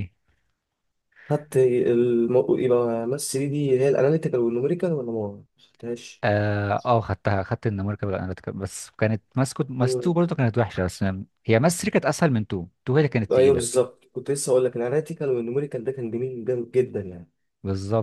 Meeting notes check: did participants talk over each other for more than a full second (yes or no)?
no